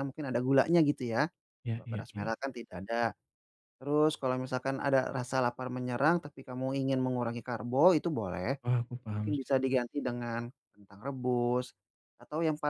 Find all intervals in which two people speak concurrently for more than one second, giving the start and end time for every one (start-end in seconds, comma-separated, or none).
none